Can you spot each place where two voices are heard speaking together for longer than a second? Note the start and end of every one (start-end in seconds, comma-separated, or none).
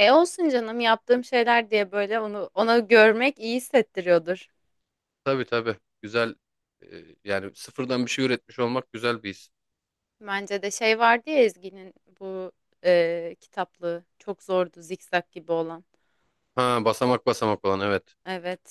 none